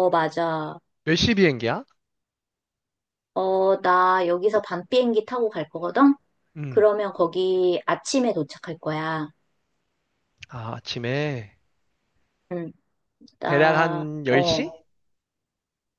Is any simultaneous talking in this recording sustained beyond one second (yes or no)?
yes